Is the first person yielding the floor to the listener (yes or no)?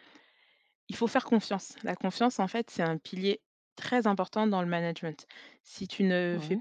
no